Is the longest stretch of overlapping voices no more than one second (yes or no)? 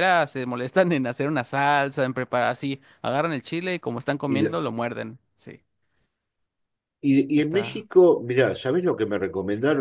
yes